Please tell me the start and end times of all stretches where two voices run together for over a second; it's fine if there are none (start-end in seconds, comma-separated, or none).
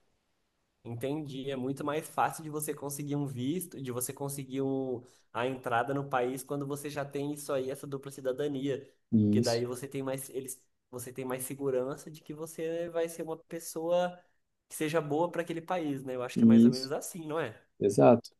none